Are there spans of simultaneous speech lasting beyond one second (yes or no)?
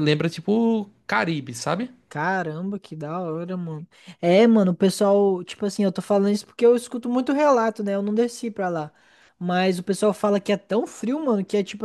no